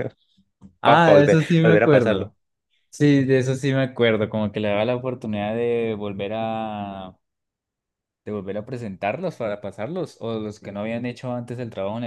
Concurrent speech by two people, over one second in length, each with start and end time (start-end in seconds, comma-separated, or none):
0.8-2.3